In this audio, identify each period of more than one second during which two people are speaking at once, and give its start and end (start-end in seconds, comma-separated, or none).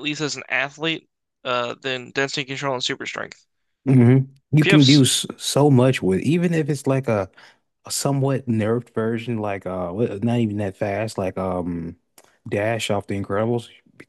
none